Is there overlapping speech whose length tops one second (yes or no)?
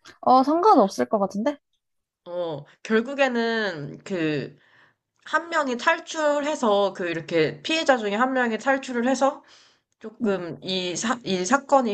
no